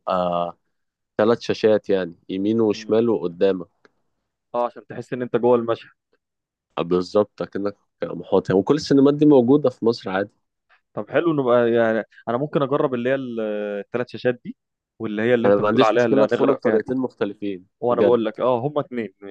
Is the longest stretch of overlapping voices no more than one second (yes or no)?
no